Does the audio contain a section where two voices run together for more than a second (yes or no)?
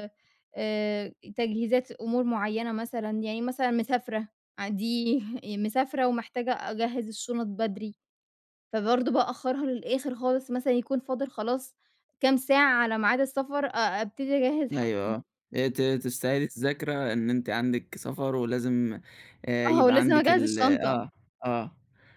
yes